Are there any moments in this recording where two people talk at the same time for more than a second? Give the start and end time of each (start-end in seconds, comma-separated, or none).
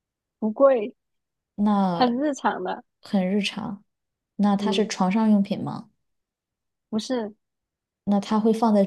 none